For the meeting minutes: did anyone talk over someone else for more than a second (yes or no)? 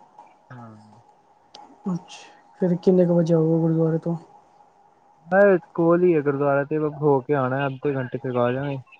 no